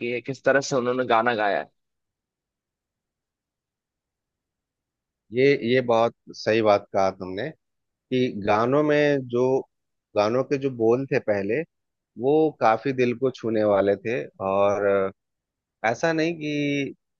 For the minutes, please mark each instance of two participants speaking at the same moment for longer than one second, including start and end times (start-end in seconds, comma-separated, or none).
none